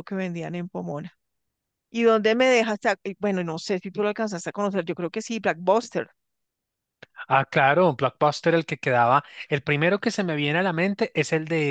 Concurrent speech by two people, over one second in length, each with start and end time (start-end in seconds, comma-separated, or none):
none